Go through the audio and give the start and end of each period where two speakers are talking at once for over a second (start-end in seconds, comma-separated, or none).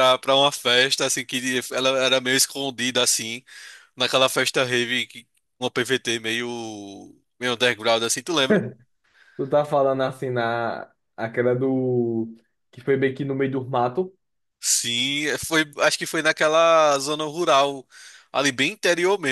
none